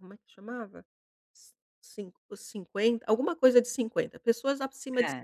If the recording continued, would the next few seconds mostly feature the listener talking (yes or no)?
no